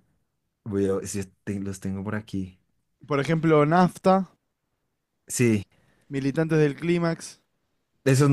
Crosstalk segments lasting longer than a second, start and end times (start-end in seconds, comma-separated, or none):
none